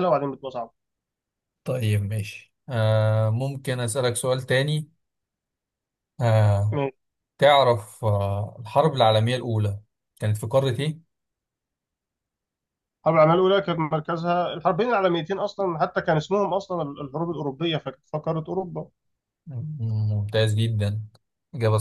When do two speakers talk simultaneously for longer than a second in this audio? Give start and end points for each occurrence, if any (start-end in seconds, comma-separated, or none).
none